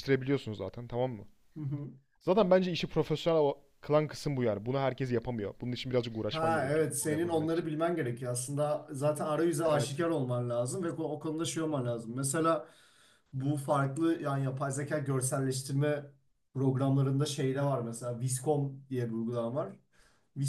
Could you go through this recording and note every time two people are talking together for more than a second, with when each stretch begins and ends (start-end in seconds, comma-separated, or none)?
6.3-7.7